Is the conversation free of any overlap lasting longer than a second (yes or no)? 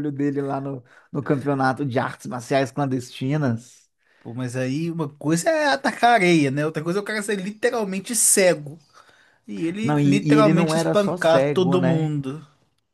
no